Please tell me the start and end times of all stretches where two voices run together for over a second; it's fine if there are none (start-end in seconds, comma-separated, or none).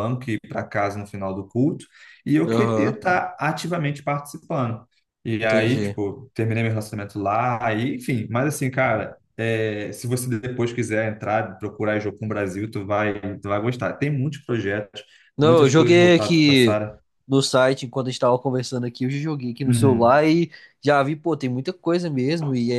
15.4-16.8